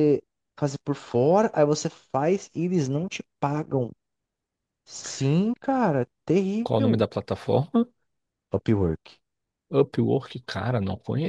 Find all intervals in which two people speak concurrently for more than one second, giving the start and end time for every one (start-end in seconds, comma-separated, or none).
none